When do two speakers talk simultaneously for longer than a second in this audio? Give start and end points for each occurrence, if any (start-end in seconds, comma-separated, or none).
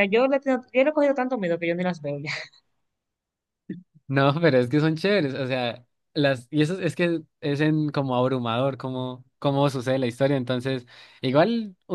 none